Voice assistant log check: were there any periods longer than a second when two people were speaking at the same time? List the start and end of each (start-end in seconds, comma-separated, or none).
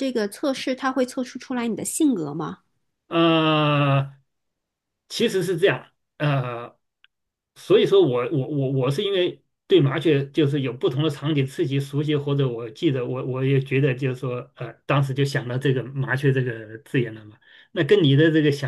none